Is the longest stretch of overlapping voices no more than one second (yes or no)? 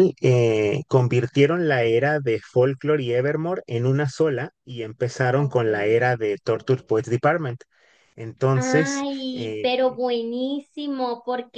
no